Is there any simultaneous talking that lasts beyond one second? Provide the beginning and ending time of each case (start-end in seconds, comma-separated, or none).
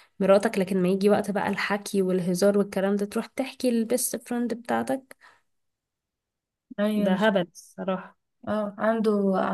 none